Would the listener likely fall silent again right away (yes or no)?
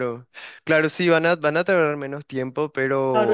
no